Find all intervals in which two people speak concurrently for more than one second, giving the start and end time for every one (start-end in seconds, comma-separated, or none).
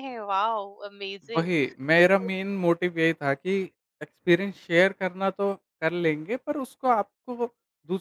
none